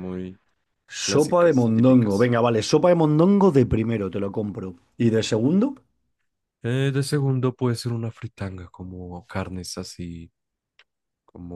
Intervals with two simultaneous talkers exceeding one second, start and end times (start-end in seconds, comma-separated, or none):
1.0-2.3